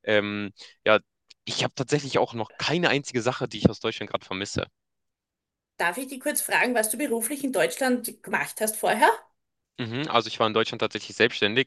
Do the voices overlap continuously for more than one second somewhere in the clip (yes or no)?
no